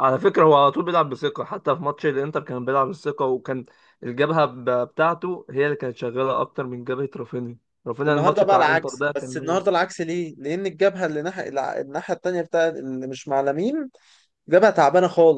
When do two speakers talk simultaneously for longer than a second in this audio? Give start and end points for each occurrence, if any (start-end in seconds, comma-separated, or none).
8.1-9.6